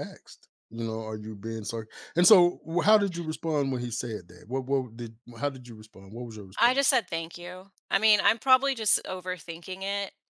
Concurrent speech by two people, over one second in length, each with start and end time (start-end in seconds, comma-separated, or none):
none